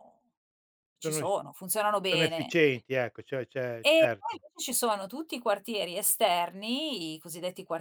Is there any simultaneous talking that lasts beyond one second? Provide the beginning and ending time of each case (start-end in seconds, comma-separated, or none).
none